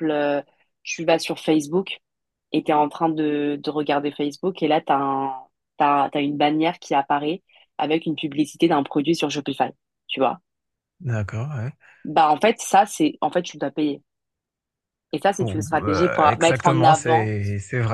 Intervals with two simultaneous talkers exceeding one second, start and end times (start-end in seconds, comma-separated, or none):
15.4-17.3